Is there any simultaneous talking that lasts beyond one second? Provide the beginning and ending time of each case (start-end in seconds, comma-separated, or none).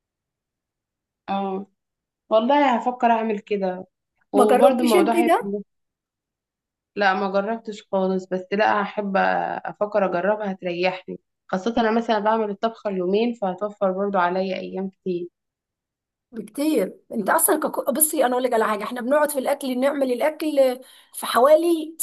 4.3-5.5